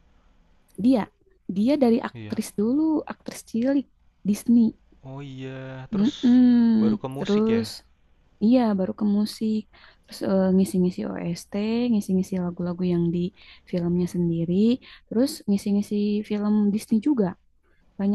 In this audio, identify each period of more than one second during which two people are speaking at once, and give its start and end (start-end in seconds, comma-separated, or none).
none